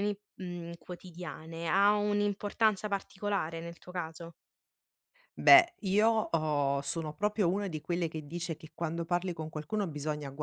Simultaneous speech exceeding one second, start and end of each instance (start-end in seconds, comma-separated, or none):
none